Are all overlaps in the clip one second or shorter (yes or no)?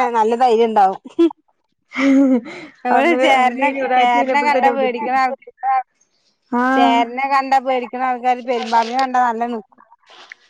no